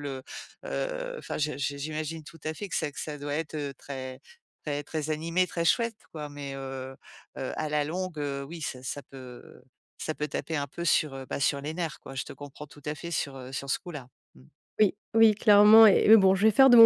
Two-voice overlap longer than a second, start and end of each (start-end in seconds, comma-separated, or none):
none